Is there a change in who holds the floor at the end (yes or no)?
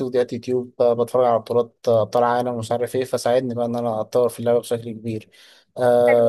no